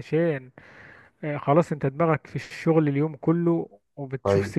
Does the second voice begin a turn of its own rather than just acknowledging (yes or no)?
no